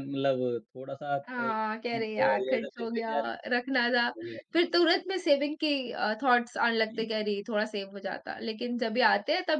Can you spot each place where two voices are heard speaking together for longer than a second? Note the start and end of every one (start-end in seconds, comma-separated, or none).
1.3-3.1